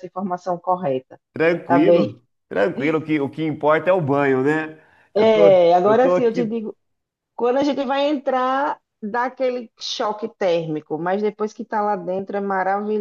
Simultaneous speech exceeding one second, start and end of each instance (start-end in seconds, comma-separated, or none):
5.2-6.6